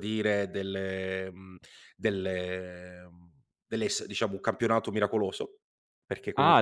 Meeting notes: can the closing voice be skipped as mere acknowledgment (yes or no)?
no